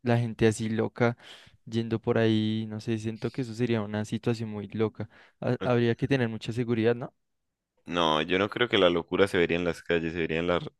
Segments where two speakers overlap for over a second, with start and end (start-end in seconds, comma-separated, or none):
none